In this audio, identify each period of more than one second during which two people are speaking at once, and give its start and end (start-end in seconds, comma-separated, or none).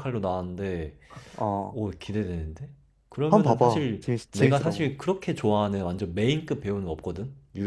3.3-4.9